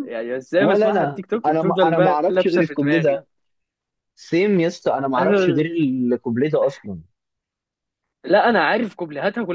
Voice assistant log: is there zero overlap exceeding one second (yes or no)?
no